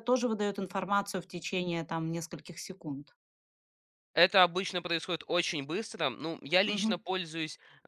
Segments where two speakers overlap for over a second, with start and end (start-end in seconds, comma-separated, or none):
none